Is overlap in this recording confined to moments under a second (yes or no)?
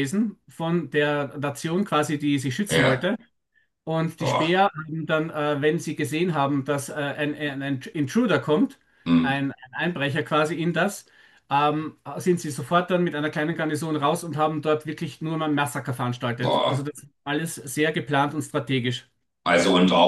yes